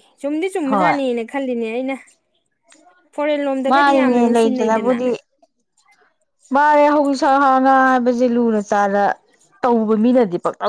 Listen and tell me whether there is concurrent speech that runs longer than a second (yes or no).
yes